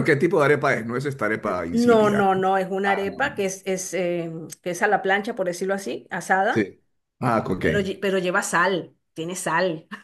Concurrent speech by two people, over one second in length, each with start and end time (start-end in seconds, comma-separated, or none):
1.4-3.2